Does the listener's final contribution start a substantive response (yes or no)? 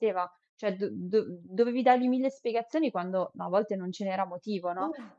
no